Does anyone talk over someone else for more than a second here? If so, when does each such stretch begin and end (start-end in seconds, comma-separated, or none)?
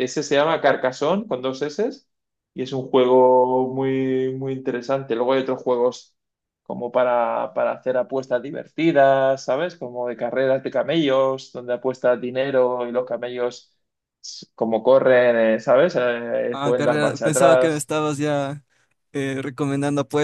16.5-17.9